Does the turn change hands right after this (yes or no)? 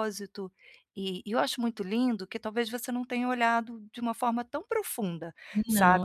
no